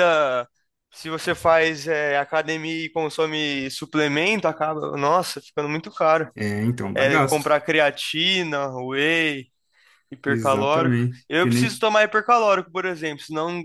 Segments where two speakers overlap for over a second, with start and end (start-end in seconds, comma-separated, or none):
10.3-11.8